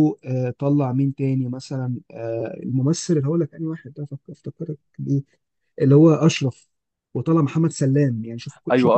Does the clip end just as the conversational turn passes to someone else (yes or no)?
yes